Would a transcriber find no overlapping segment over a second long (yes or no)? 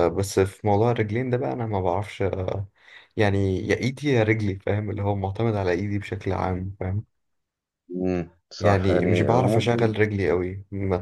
no